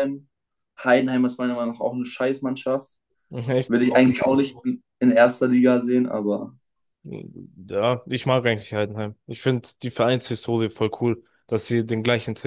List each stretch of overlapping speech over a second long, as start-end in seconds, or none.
none